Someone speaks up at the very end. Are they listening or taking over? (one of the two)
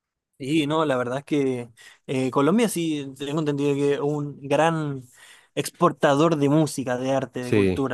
taking over